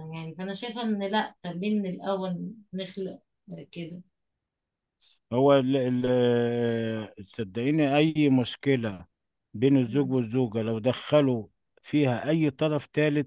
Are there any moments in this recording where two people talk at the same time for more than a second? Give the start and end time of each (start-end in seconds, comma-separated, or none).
none